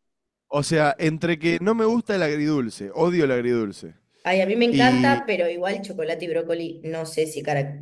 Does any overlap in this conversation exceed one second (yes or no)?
no